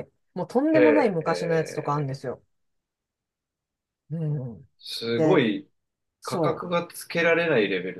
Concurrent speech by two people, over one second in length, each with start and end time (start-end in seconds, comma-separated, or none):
0.7-2.2